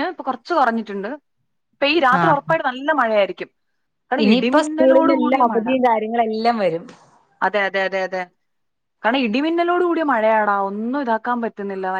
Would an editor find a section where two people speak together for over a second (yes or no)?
yes